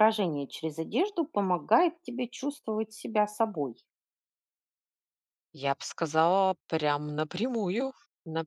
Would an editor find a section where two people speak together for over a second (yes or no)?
no